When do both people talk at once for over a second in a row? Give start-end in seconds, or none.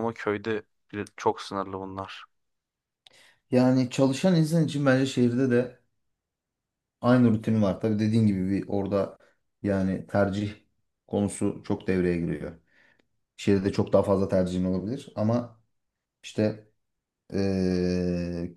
none